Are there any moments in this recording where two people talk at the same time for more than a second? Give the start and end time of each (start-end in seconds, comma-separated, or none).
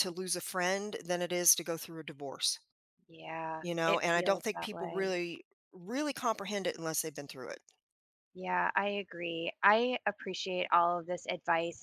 3.6-5.2